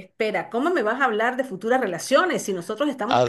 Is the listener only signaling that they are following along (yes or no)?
yes